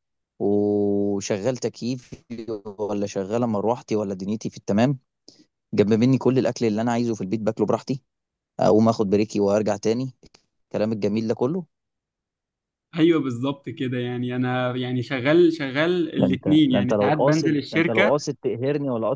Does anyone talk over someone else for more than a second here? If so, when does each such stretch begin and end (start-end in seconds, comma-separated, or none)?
16.2-18.2